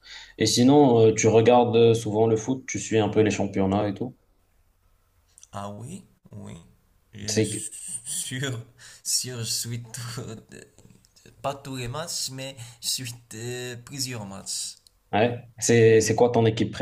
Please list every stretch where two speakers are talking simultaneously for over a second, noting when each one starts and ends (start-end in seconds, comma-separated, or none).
none